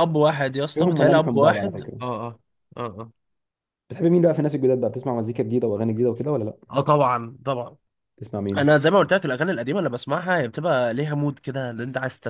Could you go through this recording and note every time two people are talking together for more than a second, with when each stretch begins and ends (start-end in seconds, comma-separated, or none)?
0.7-2.0